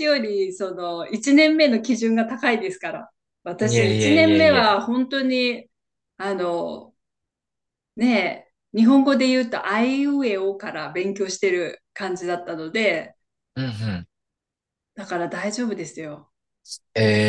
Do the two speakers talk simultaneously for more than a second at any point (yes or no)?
yes